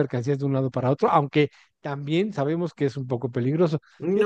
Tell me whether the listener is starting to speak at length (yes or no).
no